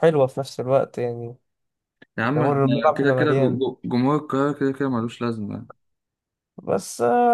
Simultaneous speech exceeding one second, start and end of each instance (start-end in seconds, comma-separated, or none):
2.3-3.6